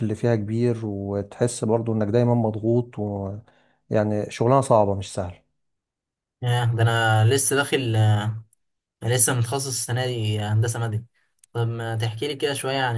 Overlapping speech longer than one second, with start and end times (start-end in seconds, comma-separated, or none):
none